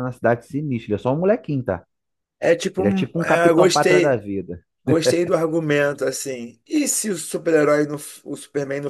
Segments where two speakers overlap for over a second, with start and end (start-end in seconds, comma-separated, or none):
2.8-4.2